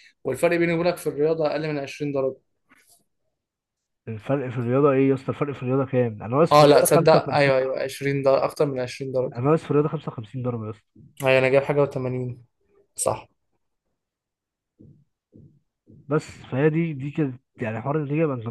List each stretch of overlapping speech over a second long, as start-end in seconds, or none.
6.5-7.9